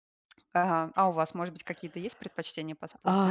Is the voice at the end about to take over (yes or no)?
yes